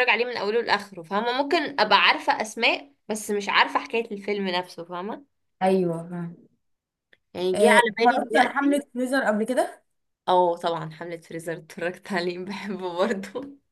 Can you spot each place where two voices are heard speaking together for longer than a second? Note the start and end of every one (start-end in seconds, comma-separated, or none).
7.5-8.8